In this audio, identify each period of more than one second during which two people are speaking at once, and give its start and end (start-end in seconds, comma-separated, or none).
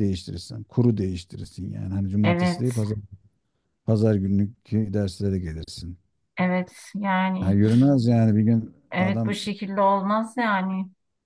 none